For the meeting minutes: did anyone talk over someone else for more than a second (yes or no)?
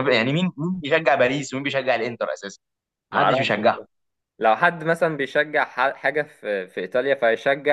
no